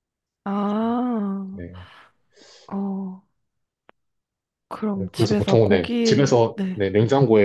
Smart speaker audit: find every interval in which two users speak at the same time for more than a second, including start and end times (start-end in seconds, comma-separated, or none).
5.0-6.8